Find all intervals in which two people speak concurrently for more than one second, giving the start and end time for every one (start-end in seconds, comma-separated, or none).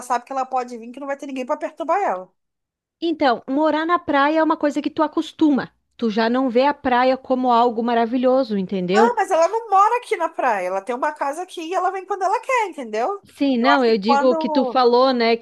13.6-14.8